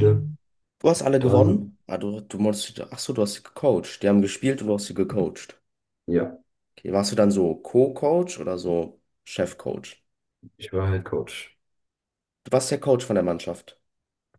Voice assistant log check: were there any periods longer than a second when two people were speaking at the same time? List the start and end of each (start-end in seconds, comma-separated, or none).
none